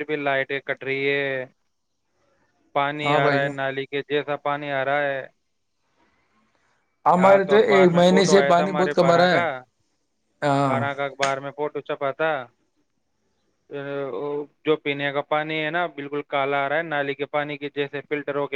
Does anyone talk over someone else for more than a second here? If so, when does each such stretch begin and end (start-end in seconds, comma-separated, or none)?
7.2-9.4